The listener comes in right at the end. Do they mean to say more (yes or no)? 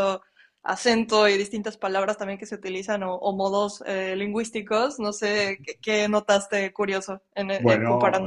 yes